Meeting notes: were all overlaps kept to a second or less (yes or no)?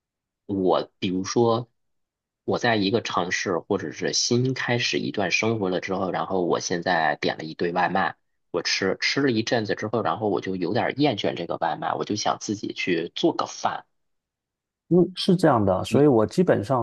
yes